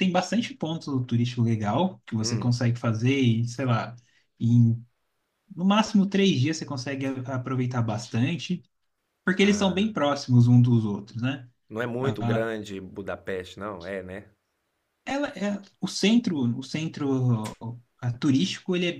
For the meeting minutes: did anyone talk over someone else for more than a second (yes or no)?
no